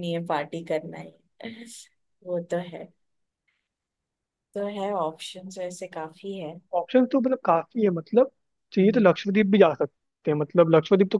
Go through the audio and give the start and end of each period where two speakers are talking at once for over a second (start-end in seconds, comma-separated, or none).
none